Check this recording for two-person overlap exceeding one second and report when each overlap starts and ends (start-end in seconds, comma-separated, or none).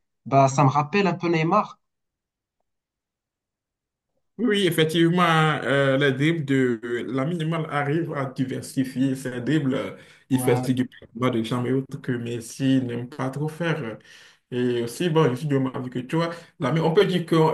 none